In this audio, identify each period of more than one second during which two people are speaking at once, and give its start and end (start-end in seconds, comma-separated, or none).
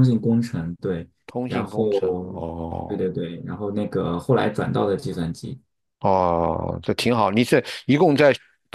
none